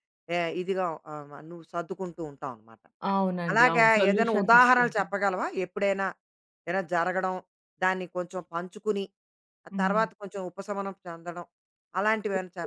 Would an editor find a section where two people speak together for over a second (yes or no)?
yes